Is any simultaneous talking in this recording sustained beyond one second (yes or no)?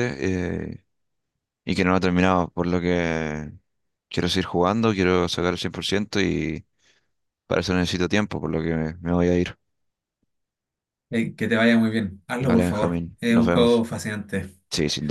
yes